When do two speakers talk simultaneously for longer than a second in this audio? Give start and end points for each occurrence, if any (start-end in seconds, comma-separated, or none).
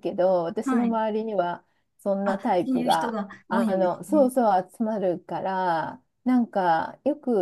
2.2-4.3